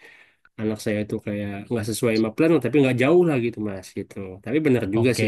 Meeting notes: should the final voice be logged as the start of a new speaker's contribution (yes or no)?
no